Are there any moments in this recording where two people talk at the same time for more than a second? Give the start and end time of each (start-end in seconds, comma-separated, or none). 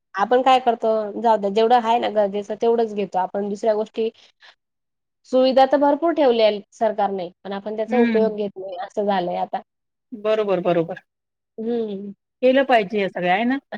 none